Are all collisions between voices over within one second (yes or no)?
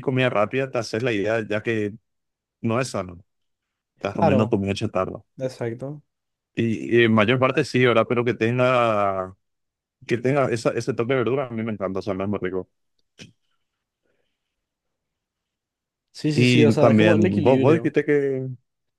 no